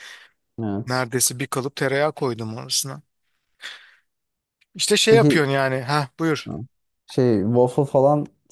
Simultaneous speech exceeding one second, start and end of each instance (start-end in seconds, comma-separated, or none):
none